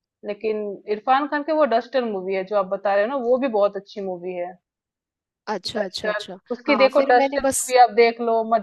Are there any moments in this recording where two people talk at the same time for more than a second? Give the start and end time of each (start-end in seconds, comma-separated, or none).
5.8-7.7